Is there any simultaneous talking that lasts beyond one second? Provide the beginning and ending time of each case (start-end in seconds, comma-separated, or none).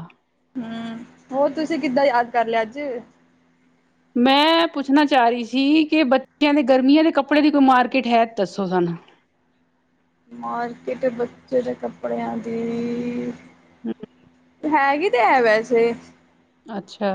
none